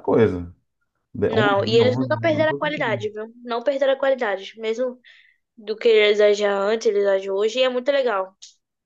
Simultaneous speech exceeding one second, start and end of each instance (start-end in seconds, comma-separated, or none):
1.2-3.0